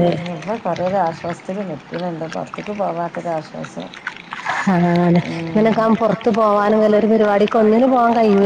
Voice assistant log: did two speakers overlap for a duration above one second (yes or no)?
yes